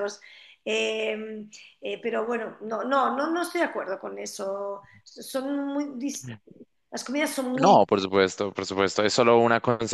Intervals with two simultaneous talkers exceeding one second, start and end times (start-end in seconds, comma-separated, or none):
none